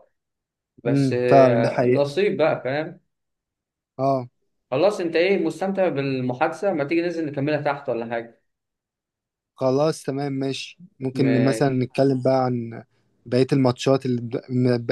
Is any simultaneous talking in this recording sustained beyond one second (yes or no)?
yes